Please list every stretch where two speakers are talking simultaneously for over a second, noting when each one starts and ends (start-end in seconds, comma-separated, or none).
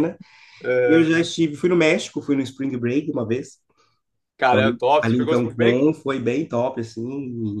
4.5-5.9